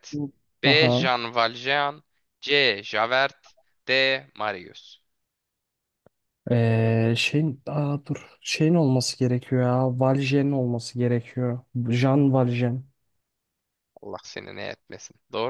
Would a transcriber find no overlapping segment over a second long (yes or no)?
yes